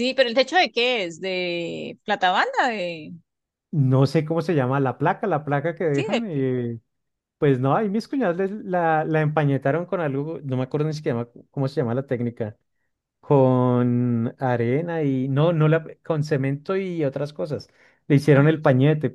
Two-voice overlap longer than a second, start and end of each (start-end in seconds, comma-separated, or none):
none